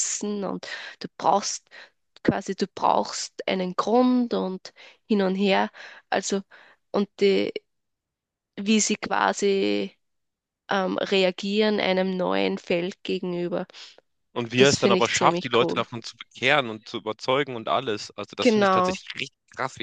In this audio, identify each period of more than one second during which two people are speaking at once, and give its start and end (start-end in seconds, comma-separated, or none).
14.6-15.8